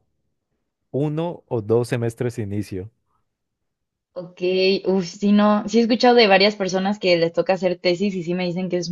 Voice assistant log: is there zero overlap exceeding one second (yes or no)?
yes